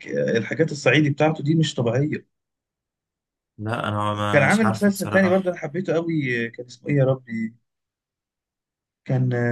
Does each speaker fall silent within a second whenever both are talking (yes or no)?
no